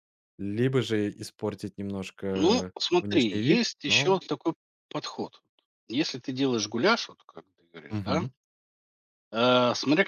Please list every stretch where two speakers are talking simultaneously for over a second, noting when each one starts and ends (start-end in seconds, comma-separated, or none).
2.3-4.2